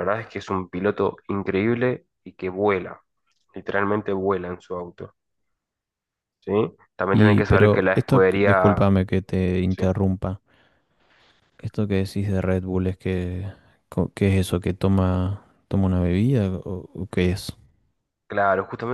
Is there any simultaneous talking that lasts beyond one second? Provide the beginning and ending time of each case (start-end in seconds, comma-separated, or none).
7.1-8.8